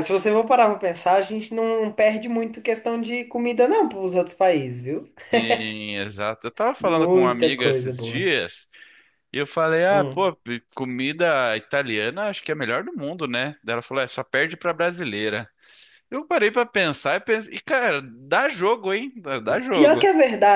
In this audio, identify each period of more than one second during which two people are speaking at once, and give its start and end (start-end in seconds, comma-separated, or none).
6.8-8.3